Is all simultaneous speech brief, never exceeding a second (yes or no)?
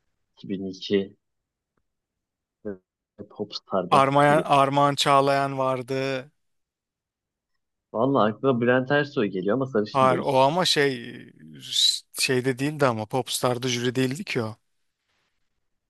yes